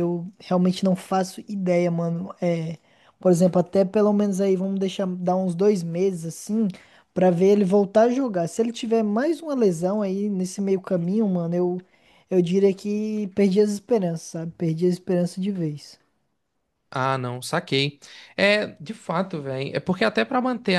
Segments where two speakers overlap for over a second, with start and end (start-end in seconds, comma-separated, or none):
none